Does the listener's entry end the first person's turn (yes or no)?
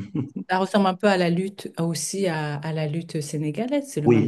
yes